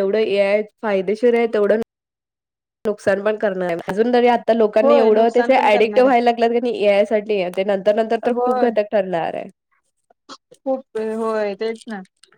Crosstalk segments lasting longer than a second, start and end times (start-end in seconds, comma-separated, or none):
4.8-6.1